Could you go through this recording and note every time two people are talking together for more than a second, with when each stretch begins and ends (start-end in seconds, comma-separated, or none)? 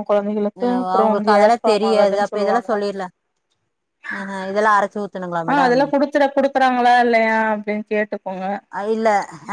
0.6-2.7